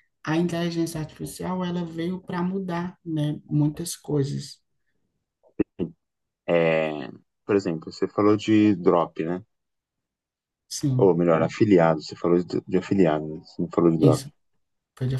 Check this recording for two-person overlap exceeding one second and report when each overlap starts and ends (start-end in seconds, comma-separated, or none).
none